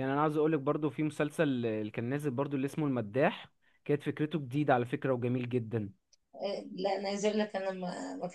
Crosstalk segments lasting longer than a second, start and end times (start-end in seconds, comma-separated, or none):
none